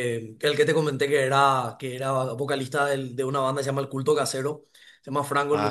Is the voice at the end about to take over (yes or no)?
no